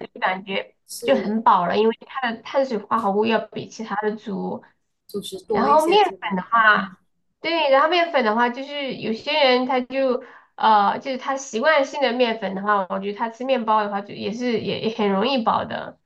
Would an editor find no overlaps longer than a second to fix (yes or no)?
no